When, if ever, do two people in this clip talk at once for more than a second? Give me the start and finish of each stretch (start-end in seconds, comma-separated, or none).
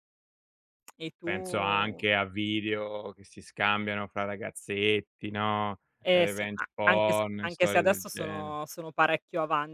6.0-8.6